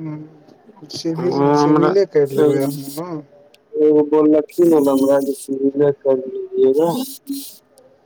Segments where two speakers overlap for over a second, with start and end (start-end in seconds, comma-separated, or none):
1.2-2.7